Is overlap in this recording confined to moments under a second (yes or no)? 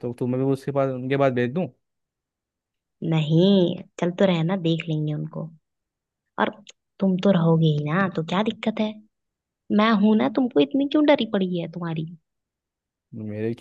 yes